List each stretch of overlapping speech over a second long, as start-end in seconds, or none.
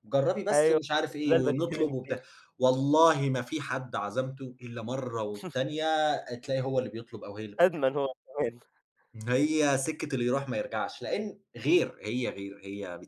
0.5-2.1